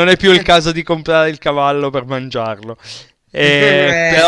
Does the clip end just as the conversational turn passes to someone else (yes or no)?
no